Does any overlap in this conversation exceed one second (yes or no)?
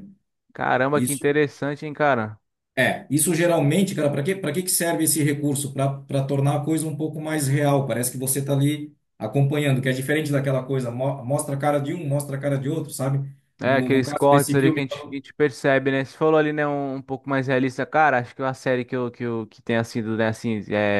yes